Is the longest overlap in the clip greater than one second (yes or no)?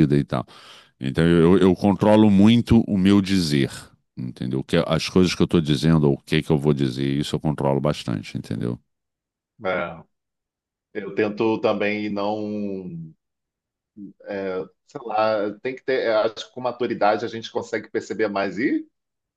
no